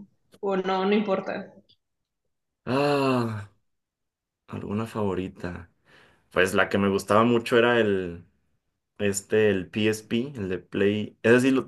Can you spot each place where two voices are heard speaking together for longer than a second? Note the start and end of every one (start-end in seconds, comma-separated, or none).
none